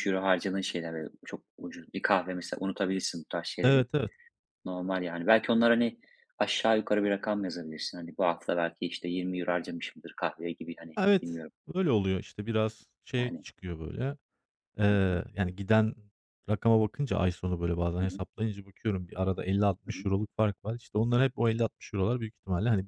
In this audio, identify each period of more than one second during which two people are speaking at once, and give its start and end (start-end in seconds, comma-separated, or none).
none